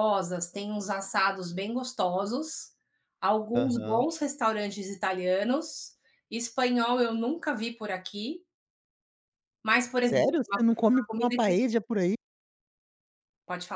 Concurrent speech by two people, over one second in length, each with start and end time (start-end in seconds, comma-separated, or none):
10.0-11.6